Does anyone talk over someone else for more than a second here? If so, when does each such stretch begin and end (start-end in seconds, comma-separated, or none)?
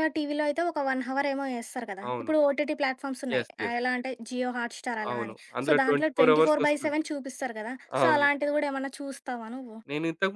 5.1-7.0